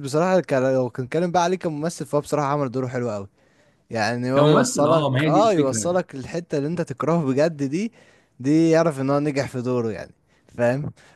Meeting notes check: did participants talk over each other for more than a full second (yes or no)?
yes